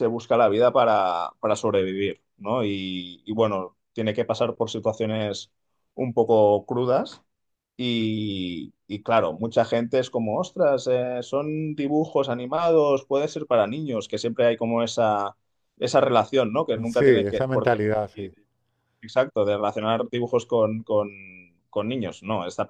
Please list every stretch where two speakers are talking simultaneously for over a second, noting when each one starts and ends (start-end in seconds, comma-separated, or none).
16.9-18.4